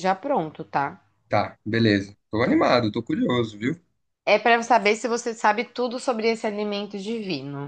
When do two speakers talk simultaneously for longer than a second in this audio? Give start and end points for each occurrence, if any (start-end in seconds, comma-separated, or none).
none